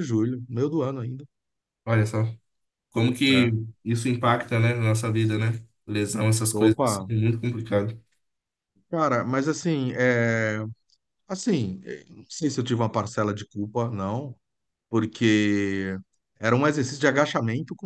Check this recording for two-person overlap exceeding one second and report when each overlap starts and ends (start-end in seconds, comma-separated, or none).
none